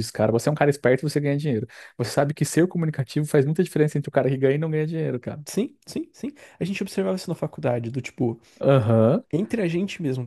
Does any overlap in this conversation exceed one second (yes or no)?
no